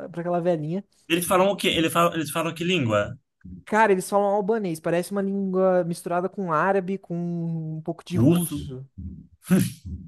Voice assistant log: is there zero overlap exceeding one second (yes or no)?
yes